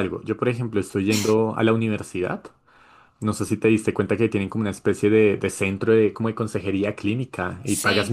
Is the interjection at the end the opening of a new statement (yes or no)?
no